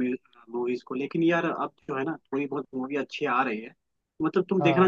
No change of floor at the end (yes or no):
yes